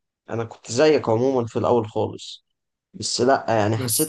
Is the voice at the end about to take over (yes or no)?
no